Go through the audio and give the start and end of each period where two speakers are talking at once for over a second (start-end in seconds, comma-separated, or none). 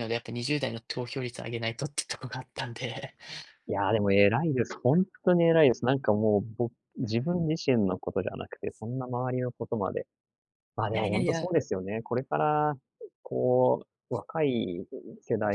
none